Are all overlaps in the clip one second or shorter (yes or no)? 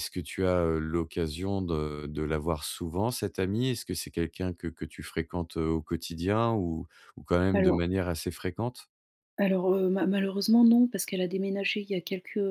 yes